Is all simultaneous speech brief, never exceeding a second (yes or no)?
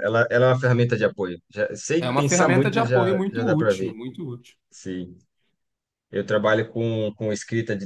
no